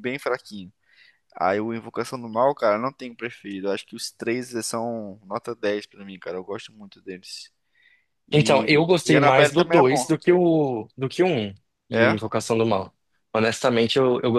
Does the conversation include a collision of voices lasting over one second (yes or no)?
yes